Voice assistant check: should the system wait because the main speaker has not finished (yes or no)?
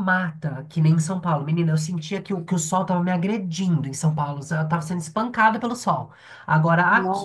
yes